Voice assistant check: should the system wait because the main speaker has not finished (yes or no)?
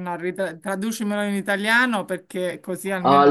no